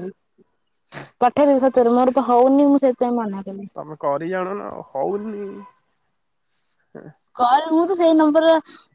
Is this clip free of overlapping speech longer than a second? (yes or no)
yes